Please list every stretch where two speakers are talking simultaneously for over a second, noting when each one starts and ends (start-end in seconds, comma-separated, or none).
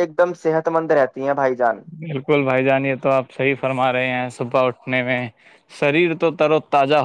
none